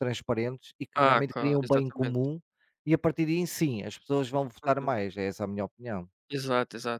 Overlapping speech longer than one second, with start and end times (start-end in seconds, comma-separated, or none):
0.9-2.3